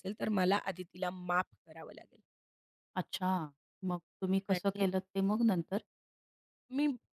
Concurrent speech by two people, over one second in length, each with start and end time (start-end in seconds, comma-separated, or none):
none